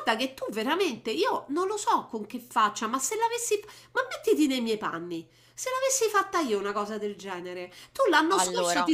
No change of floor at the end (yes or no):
yes